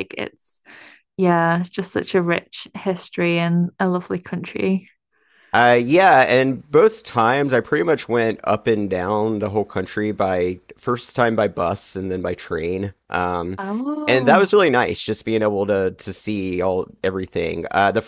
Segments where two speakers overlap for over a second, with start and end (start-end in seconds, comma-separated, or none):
none